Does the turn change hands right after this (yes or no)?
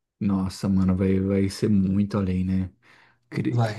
no